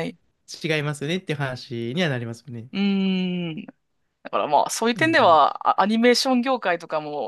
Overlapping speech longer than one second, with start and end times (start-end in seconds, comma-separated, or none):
none